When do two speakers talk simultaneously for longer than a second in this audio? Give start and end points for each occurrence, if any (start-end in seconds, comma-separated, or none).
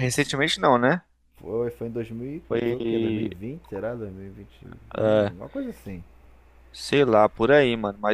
none